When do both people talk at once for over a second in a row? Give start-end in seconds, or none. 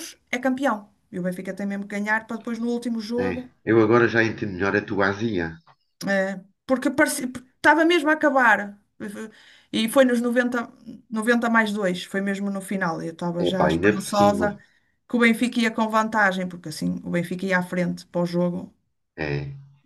13.4-14.6